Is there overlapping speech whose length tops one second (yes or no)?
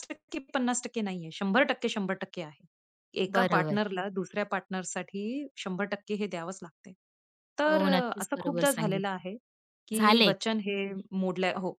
yes